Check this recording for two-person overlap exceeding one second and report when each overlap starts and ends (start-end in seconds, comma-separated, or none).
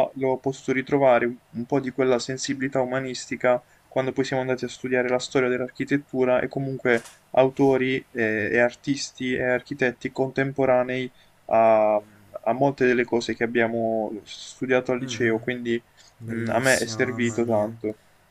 16.3-17.7